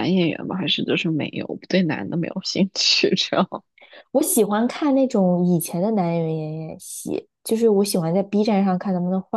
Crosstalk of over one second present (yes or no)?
no